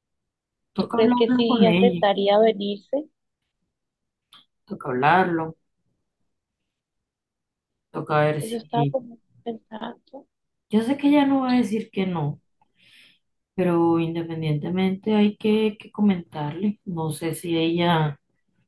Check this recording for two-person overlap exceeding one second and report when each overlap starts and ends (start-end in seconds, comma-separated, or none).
0.8-2.0